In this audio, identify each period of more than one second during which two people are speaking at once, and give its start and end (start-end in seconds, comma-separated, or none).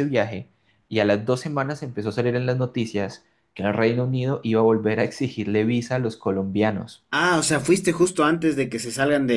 none